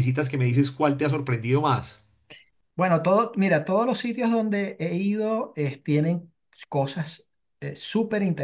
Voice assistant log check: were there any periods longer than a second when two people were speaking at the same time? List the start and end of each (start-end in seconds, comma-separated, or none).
none